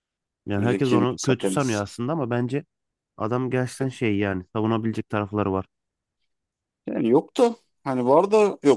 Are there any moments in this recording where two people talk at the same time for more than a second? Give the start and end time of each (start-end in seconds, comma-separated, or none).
0.6-1.9